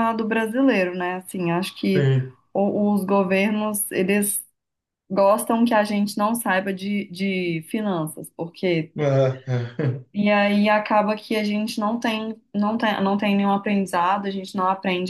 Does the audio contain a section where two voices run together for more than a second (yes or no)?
no